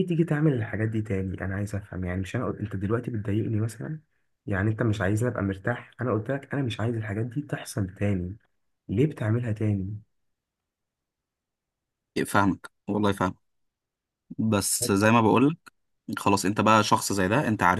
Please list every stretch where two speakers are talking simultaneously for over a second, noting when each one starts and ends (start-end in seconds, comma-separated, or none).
none